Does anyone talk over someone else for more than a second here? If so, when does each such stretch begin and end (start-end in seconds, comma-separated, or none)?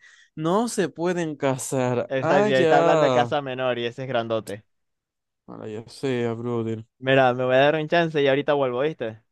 2.1-3.3